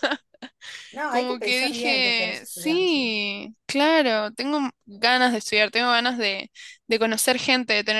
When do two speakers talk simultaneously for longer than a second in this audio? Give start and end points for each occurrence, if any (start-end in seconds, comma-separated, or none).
1.1-3.0